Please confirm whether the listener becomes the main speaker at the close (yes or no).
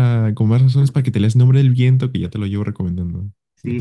yes